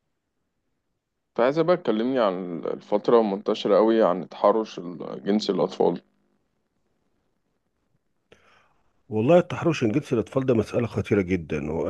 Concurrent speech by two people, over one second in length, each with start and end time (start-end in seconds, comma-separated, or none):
none